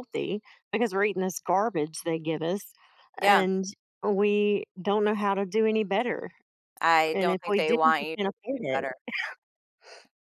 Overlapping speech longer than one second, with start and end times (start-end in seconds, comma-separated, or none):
7.1-8.9